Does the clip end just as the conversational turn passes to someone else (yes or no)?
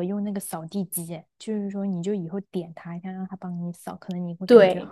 yes